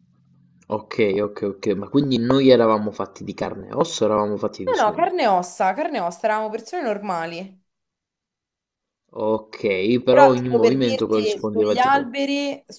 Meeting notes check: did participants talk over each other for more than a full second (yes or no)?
yes